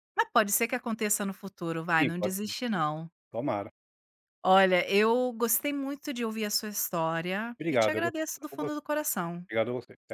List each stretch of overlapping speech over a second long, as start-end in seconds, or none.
7.6-8.8